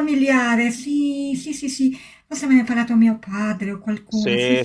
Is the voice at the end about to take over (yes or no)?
yes